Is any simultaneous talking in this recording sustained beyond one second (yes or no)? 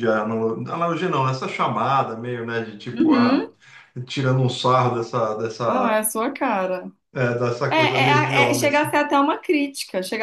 yes